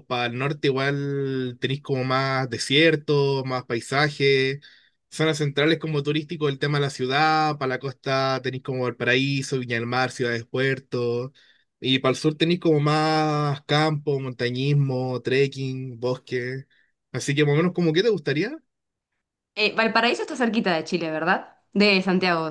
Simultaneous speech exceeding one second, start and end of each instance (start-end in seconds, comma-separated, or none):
none